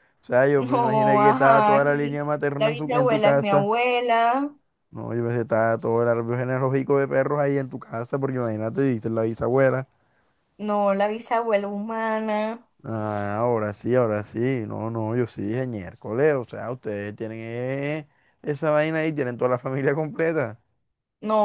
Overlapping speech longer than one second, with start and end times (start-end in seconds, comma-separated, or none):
0.6-3.7